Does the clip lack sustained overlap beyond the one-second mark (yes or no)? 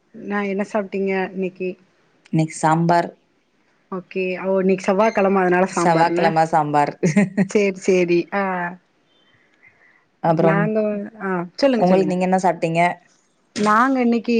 yes